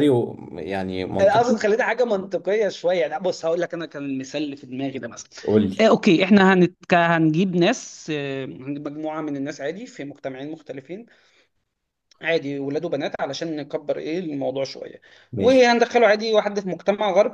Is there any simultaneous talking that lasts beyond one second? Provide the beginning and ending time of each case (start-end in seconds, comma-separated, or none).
none